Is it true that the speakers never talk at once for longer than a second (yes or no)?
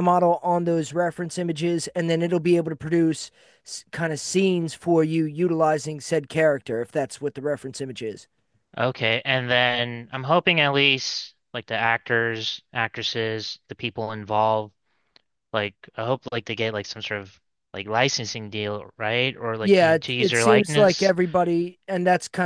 no